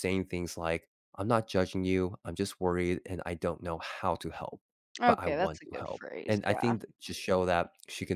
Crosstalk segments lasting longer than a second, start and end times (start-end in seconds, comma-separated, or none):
5.1-6.7